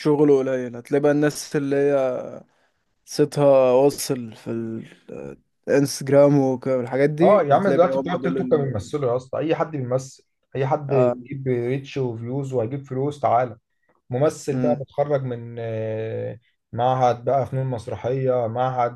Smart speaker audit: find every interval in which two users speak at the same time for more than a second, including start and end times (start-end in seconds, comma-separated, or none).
7.2-8.9